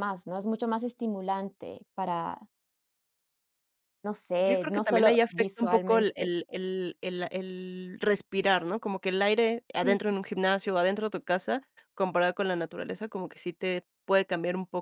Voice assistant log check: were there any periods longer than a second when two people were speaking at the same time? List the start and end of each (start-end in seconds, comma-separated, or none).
4.4-6.3